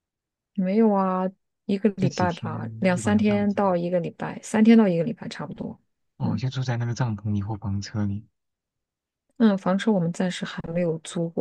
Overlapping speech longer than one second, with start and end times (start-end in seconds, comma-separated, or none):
1.9-3.6